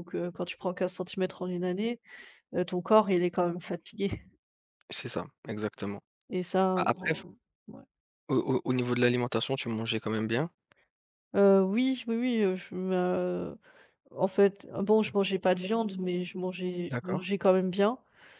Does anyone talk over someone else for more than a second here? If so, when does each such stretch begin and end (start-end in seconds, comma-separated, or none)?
none